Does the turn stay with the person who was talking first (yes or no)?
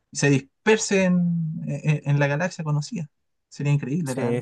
no